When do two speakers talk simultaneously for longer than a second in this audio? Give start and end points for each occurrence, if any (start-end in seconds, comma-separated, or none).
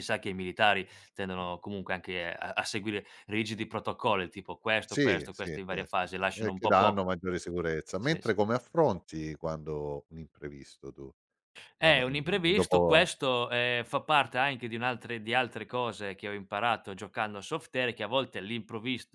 4.9-7.0, 11.8-13.1